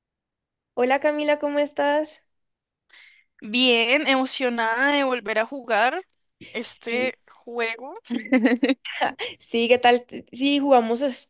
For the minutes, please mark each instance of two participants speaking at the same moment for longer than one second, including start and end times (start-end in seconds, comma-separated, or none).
none